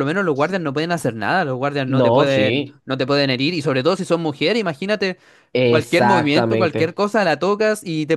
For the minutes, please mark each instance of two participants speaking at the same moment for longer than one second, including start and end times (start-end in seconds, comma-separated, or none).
5.7-7.0